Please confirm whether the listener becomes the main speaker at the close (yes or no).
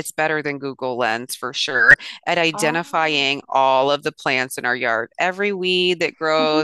no